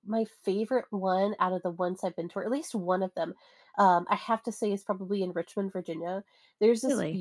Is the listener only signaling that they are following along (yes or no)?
yes